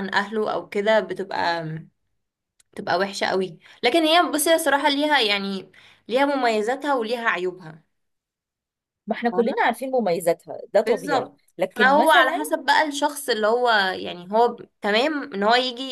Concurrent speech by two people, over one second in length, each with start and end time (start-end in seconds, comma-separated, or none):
10.8-12.5